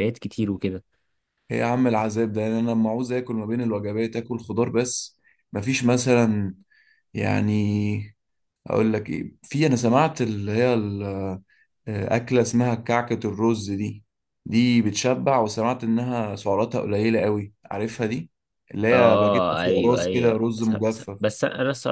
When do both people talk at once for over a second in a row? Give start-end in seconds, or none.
18.9-21.2